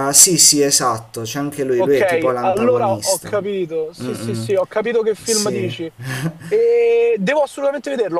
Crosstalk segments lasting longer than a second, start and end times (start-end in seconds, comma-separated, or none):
1.8-3.3